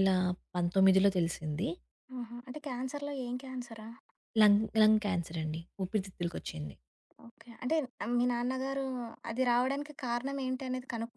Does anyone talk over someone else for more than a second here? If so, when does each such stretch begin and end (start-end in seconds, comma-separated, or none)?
none